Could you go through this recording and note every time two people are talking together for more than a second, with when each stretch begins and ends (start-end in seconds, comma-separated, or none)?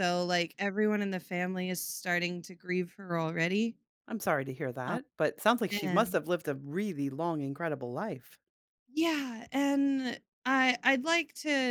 none